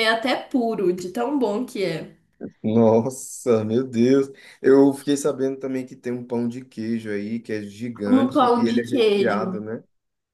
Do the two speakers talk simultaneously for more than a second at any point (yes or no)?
yes